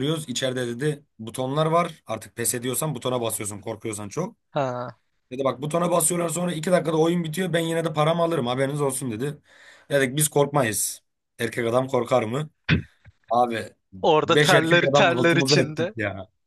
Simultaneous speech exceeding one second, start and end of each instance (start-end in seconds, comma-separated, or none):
14.2-15.9